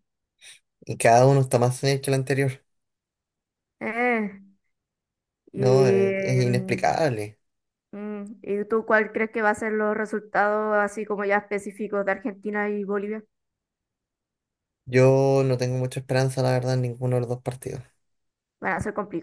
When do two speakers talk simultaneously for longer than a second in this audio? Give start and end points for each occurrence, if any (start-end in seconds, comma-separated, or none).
5.5-7.0